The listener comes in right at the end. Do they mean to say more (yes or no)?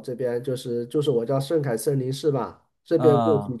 no